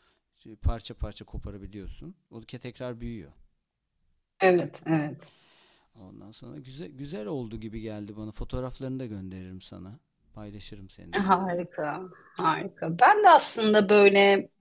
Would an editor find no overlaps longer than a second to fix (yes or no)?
yes